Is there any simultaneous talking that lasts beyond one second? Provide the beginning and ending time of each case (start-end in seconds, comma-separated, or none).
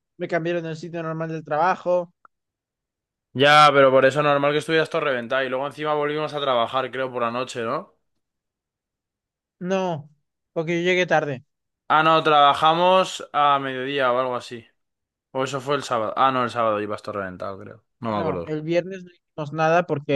none